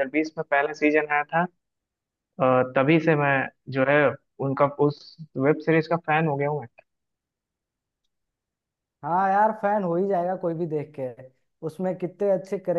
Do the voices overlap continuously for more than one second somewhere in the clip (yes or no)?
no